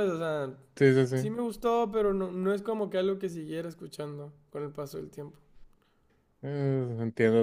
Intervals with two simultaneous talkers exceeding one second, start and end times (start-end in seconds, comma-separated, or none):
none